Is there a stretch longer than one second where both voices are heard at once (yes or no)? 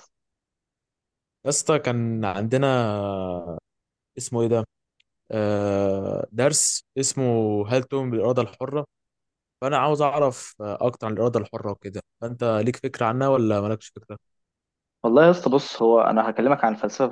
no